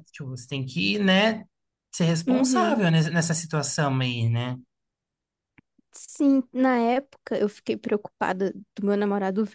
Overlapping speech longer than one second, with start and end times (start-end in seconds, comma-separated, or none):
none